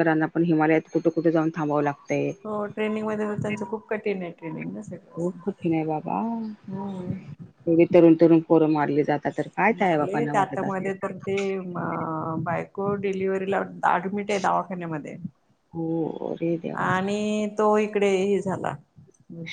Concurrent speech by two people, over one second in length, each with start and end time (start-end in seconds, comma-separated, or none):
9.8-11.2